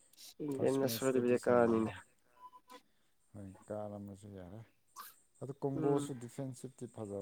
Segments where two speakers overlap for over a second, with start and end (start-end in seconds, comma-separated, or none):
0.5-1.9